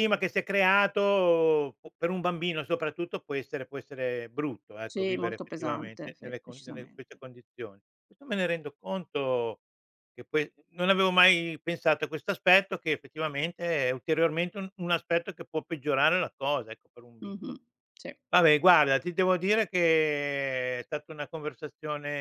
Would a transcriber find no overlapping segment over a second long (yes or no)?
no